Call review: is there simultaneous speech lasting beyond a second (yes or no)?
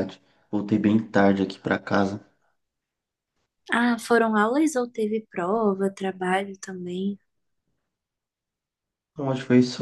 no